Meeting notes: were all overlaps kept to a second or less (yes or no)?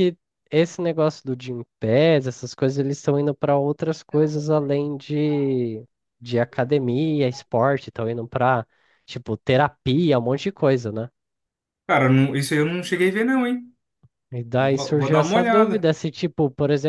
no